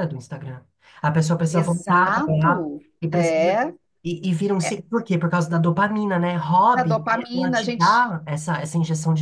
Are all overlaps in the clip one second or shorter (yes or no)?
no